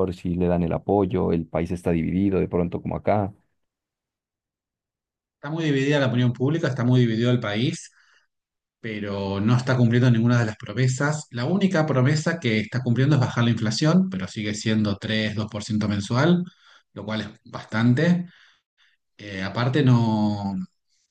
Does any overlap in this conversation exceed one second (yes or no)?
no